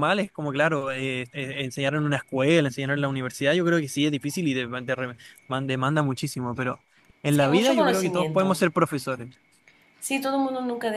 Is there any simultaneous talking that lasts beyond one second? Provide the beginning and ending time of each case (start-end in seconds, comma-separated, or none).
7.3-8.6